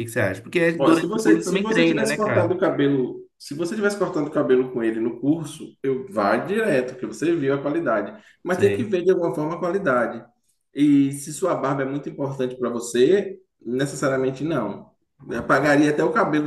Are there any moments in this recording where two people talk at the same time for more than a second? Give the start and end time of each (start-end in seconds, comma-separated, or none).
0.8-2.6